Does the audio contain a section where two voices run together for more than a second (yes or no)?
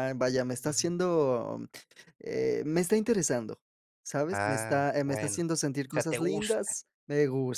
yes